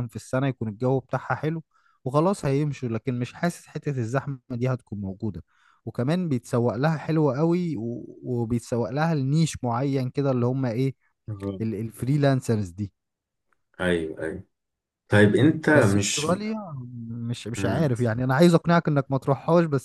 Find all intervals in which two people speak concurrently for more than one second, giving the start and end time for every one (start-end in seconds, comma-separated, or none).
none